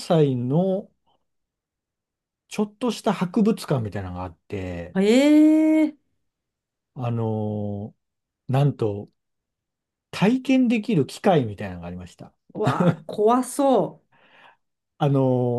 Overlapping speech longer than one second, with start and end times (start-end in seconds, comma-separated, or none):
none